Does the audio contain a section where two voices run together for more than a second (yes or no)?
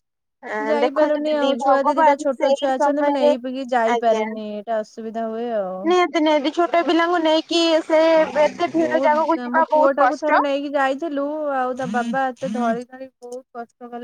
yes